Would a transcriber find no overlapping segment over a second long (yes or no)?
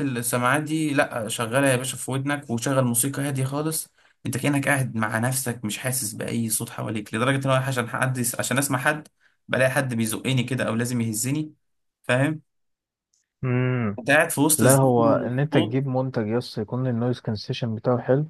no